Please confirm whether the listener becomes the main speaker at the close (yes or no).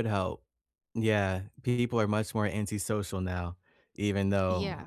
yes